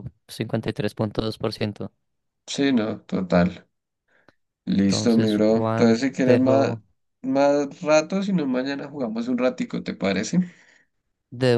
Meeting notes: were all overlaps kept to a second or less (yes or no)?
no